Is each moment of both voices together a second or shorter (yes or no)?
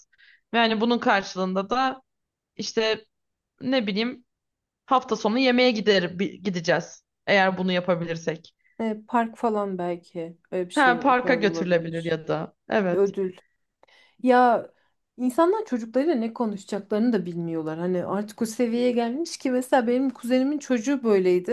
no